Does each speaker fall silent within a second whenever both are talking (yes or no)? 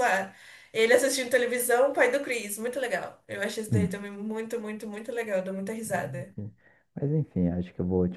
yes